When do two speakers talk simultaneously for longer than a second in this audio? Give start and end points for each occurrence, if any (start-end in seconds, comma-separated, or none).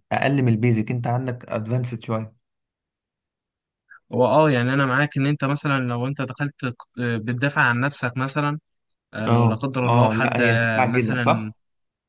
9.3-11.5